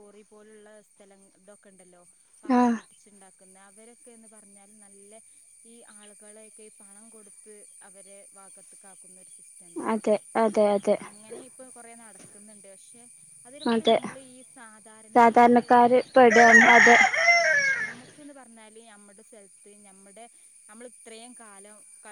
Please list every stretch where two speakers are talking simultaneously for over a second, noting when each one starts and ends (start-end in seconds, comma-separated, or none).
15.2-16.8